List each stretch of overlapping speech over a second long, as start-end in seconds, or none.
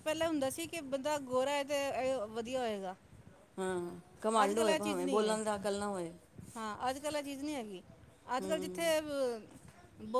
4.4-5.7